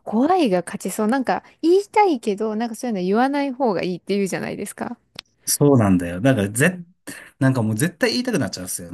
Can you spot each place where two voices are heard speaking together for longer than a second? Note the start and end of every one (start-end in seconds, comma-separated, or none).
none